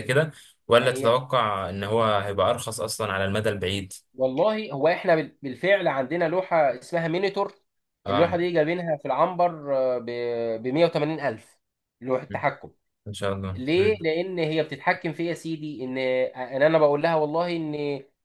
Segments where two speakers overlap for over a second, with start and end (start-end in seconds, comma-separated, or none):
none